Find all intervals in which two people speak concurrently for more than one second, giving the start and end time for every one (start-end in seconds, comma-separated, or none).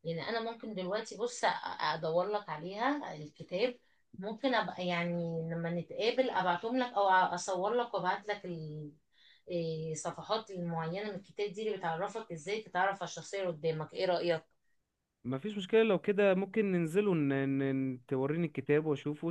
none